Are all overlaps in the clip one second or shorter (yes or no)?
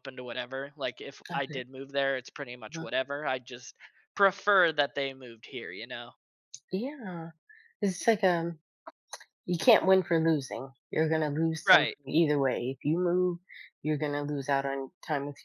yes